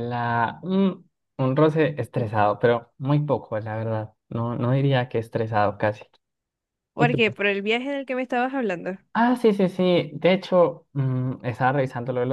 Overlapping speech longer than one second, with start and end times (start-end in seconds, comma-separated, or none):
none